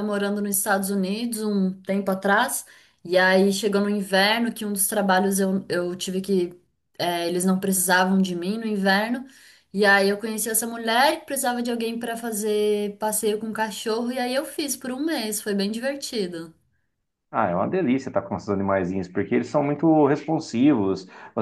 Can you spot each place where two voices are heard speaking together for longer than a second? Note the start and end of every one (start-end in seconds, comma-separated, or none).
none